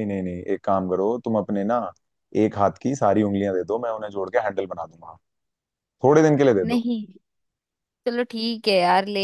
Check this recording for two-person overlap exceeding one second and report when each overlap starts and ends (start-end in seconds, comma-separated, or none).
none